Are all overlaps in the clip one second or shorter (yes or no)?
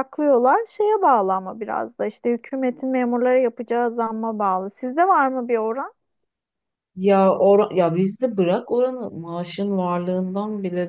yes